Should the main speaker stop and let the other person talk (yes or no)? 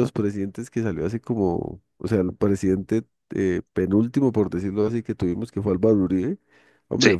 no